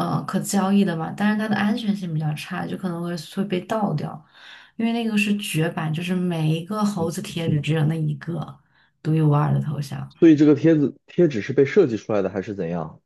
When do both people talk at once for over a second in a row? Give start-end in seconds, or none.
none